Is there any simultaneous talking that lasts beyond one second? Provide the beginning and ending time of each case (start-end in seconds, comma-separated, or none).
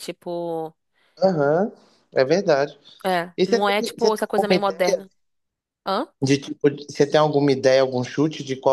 3.4-5.0